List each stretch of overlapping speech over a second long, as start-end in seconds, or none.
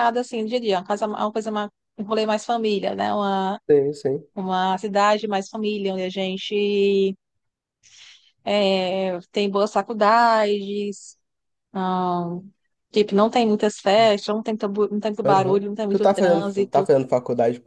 15.2-16.9